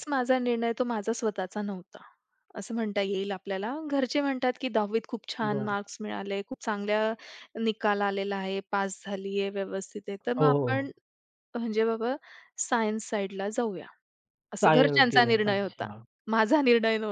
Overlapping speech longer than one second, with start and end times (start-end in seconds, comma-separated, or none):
14.6-15.9